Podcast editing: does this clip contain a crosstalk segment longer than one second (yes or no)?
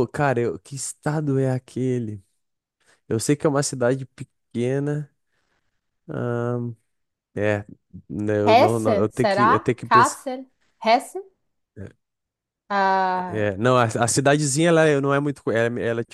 yes